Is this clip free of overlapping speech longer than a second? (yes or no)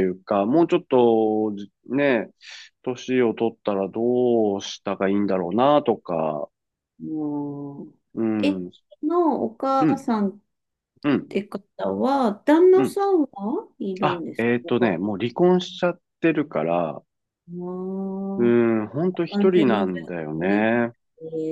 no